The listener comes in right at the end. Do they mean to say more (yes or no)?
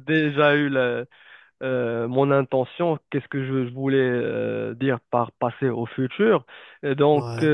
no